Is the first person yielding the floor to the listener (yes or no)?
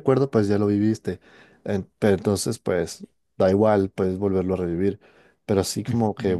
no